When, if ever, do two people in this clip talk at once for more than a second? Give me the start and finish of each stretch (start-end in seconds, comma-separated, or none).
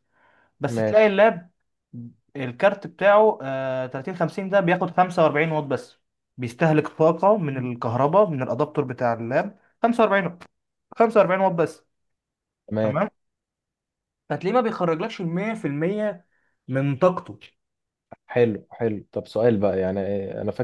none